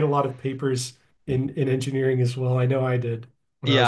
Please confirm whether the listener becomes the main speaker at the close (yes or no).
yes